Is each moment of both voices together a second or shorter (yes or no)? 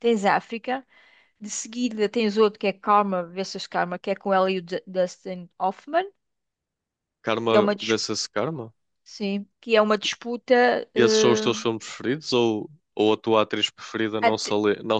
yes